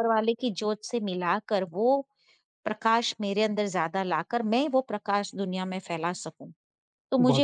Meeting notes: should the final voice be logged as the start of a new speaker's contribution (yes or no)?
no